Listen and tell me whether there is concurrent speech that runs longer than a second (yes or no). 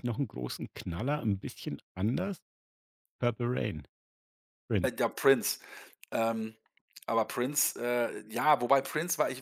no